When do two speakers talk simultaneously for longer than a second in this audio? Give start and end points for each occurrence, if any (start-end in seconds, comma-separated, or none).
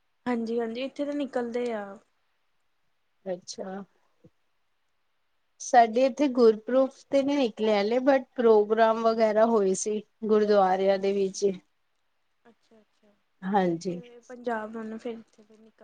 none